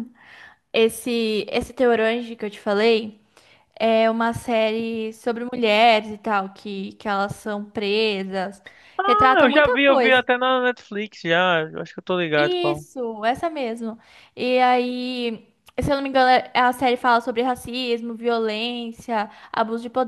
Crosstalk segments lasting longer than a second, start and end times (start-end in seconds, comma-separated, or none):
9.0-10.2